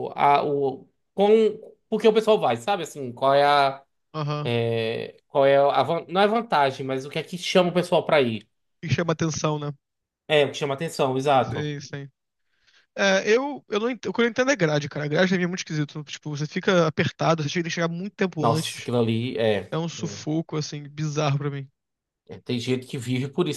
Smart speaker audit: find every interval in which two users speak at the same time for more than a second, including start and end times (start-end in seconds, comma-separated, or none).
none